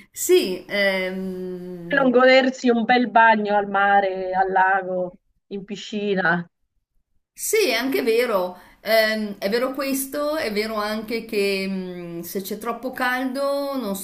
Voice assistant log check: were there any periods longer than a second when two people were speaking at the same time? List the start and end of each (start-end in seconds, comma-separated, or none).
none